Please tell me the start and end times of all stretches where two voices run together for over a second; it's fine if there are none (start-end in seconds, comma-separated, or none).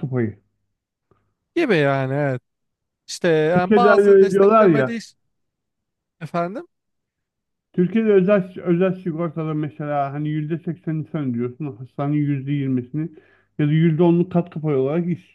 3.5-5.0